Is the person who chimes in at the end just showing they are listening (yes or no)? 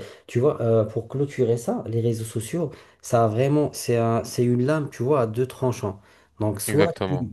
yes